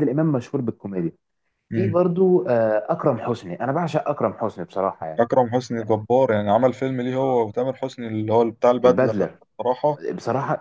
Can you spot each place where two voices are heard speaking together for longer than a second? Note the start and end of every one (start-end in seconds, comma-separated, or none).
none